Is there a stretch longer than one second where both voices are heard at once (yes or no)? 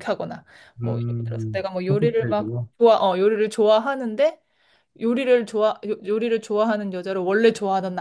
yes